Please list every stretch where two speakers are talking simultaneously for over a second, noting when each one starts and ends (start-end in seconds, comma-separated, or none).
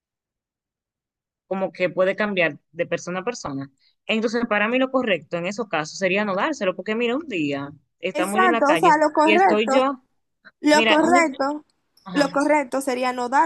8.1-9.7